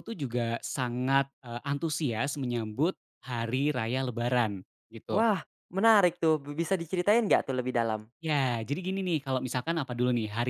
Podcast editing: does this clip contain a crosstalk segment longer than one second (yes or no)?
no